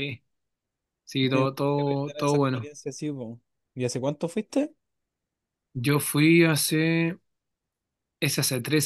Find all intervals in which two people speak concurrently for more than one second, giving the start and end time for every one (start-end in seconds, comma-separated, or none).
1.3-2.7